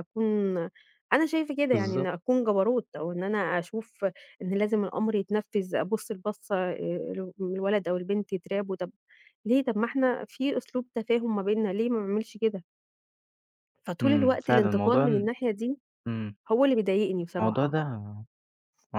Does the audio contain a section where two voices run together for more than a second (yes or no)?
yes